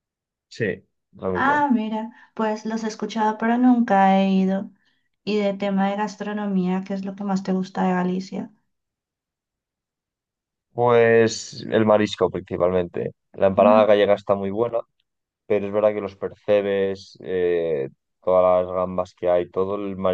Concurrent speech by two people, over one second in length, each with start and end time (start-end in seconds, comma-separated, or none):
none